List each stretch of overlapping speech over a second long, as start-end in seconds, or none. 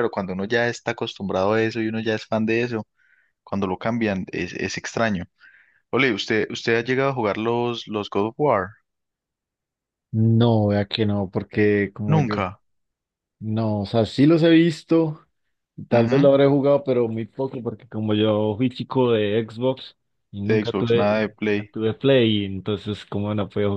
20.5-21.7